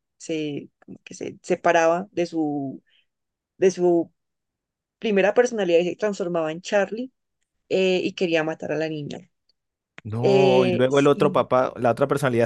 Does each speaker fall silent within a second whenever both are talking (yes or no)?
no